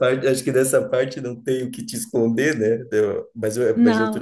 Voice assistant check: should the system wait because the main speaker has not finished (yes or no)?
yes